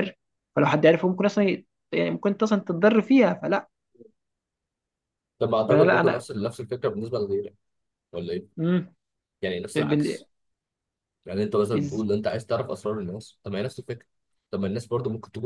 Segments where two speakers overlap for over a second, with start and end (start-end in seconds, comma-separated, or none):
none